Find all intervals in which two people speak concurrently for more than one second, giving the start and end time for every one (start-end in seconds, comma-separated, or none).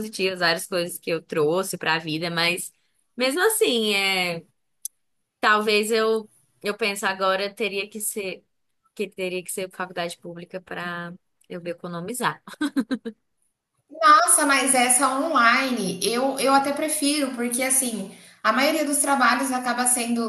none